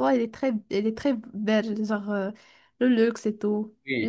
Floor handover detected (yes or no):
no